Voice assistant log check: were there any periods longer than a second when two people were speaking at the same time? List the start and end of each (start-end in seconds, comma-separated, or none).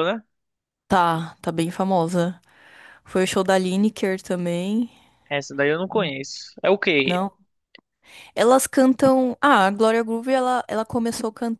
none